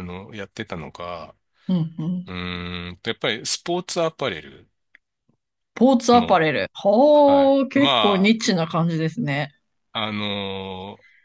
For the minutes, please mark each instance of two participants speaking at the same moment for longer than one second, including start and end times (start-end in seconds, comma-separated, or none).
7.1-8.3